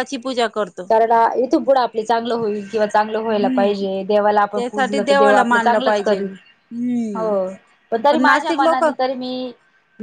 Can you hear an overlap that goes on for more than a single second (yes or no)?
yes